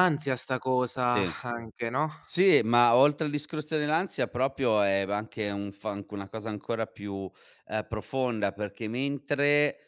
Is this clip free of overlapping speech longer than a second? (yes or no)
yes